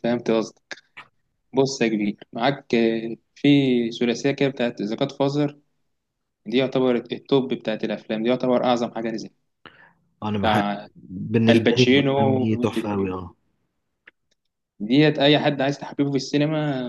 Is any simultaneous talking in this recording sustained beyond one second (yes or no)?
yes